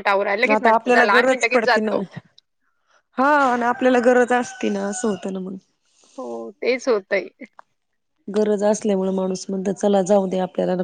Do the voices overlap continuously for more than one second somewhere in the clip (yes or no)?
yes